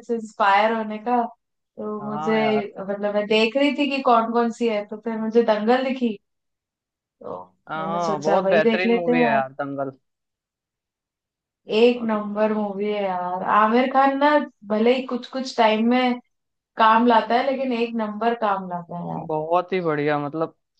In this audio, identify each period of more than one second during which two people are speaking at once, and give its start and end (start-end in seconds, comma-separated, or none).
7.8-9.4